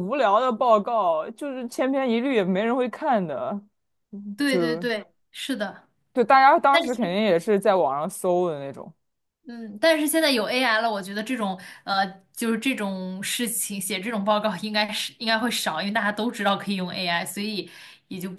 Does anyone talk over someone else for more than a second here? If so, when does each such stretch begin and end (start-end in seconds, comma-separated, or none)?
none